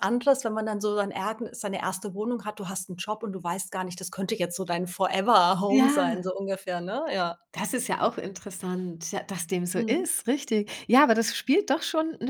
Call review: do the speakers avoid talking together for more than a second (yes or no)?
yes